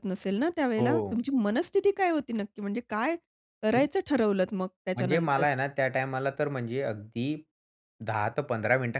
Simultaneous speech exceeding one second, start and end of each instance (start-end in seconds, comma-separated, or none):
none